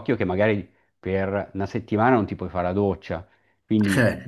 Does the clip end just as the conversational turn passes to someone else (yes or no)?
no